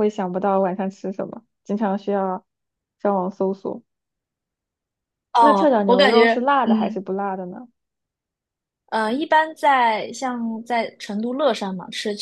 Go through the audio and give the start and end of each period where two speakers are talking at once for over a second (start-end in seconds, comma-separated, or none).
5.4-7.0